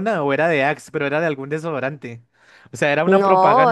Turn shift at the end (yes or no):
yes